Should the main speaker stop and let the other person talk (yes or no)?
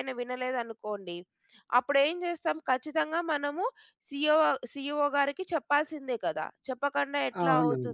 no